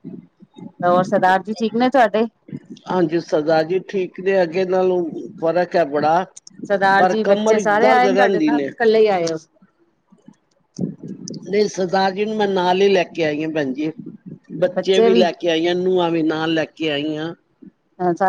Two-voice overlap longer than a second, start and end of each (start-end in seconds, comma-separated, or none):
7.0-8.7